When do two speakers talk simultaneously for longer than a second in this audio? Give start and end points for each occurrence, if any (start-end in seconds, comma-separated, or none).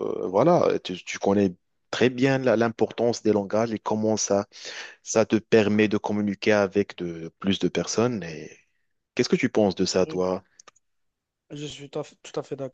none